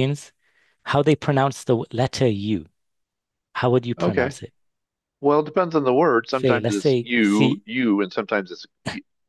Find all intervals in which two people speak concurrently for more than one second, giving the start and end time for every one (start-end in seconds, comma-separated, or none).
6.3-7.6